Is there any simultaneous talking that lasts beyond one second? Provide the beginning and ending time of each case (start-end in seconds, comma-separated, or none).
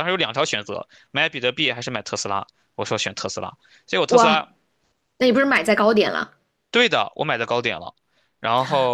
none